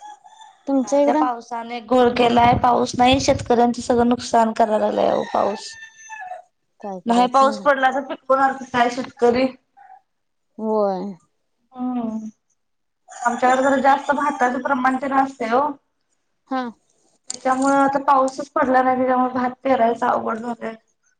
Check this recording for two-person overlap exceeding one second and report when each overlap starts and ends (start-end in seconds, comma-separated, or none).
none